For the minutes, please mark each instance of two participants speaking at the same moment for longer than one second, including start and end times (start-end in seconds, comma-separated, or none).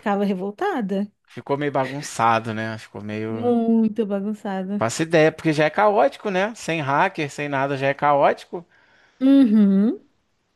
none